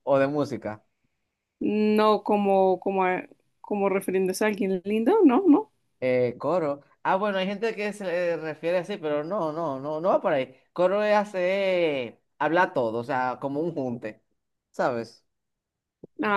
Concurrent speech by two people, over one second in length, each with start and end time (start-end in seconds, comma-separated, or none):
none